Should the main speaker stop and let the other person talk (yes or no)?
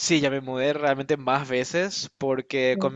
no